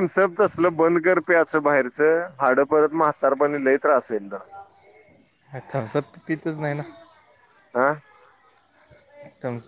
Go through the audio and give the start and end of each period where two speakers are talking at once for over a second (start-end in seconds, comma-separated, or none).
none